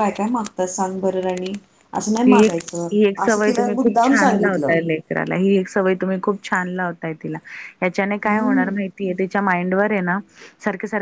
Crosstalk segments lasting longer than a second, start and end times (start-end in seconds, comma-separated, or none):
3.2-4.7